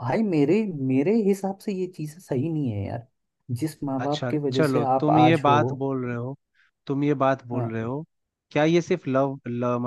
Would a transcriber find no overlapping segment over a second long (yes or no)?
no